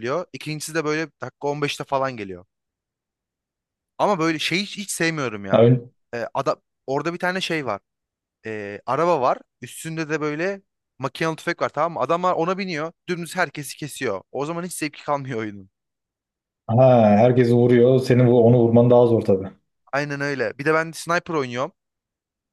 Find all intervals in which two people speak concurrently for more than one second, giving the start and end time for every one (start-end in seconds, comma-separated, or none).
none